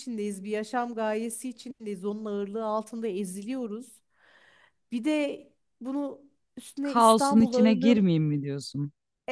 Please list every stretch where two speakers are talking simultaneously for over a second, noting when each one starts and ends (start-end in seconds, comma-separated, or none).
6.8-8.0